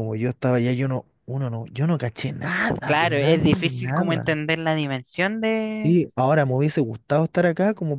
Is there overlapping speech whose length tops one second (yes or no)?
yes